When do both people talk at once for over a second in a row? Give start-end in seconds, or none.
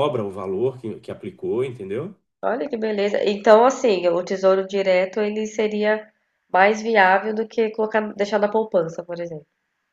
none